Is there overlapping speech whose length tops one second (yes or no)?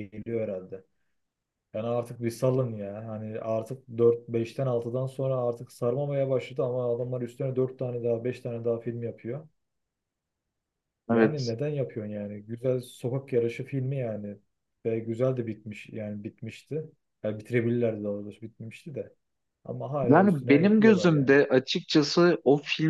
yes